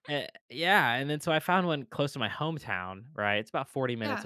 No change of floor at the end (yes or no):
yes